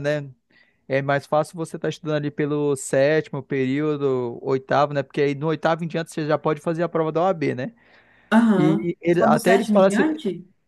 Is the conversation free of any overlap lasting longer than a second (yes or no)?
no